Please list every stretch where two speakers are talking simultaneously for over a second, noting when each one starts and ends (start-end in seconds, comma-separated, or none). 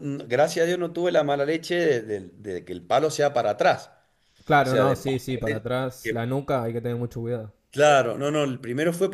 4.6-6.3